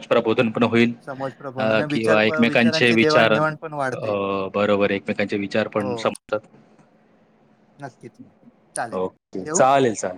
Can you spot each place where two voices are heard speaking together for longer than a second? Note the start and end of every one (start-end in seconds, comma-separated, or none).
1.6-3.4